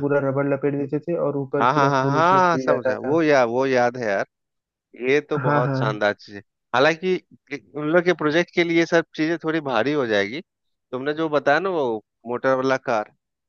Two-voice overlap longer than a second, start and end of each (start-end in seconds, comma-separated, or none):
1.6-3.2